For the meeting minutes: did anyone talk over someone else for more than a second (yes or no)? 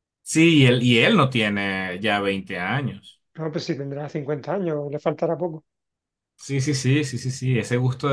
no